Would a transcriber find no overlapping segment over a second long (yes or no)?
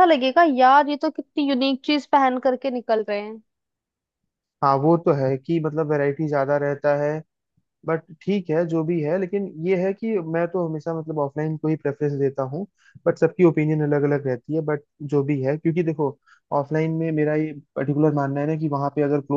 yes